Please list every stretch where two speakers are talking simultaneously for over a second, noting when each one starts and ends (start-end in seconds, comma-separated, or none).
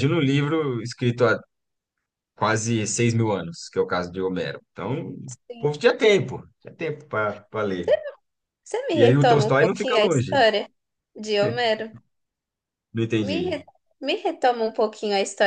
8.9-10.4